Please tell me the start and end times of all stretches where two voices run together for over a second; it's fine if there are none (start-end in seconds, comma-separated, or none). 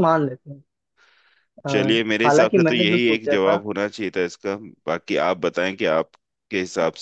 2.2-3.6